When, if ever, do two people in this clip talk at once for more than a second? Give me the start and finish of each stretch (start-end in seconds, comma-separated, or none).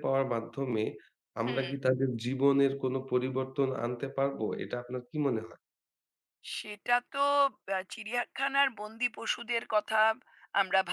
none